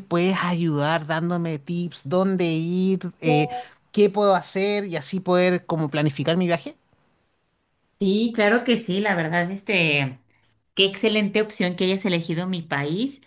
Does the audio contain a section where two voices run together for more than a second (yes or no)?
no